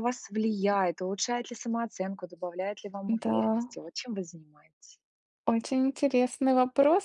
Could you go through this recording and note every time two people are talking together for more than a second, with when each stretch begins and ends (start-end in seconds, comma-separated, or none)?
none